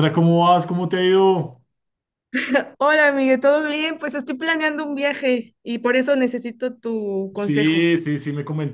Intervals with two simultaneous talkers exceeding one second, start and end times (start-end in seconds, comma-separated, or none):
none